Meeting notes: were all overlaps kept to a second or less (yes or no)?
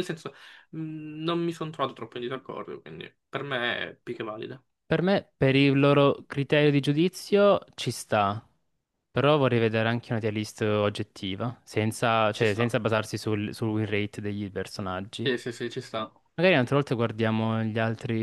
yes